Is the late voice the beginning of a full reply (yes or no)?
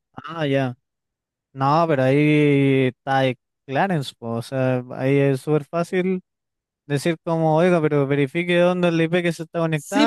yes